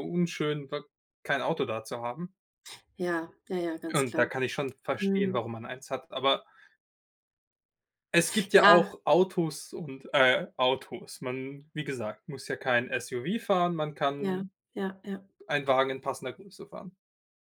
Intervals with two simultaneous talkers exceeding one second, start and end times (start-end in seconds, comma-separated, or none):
none